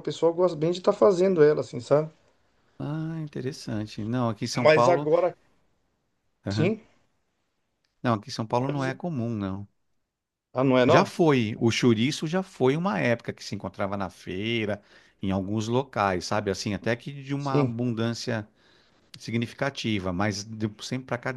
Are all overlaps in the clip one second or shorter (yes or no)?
yes